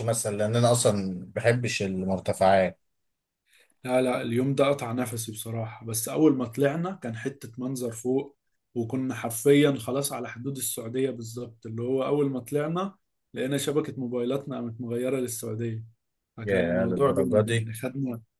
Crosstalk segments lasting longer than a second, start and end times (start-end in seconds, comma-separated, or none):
16.4-17.7